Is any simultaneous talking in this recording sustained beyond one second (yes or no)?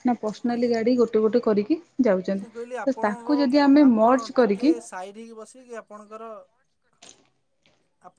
yes